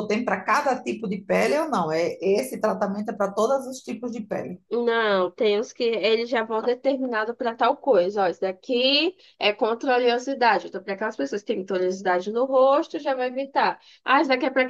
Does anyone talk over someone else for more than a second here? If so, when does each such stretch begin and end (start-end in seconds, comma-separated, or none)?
none